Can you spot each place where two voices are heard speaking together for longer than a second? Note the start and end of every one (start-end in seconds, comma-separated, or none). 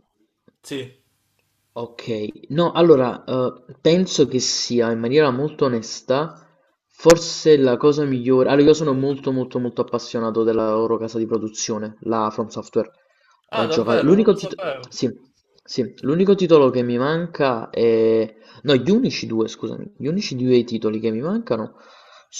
13.5-14.9